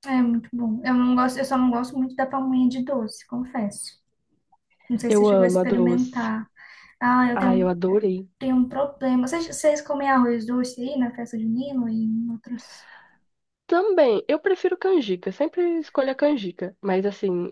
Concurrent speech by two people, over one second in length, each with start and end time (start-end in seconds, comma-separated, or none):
5.1-6.3